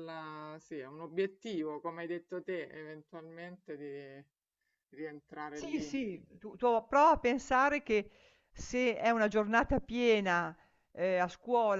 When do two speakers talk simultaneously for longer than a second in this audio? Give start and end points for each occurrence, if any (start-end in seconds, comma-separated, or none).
none